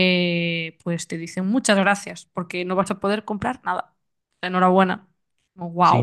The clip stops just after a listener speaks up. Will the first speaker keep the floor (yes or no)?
no